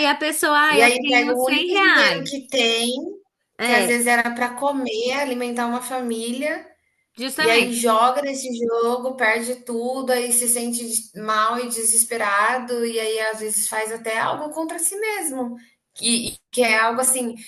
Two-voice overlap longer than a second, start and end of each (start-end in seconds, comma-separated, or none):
0.7-2.3